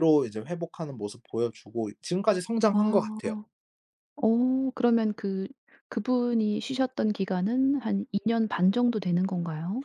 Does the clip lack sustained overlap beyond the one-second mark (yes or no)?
yes